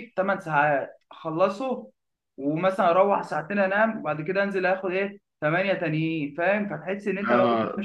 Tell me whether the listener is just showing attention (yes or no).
yes